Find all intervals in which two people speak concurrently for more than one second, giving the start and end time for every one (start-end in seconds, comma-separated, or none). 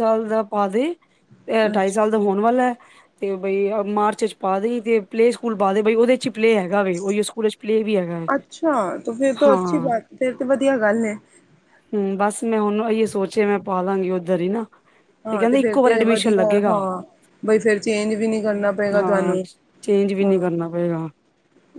15.4-16.7